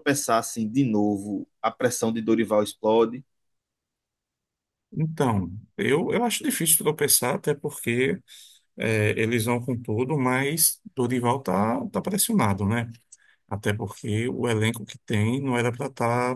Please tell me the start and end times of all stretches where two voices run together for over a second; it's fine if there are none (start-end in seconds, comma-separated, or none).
none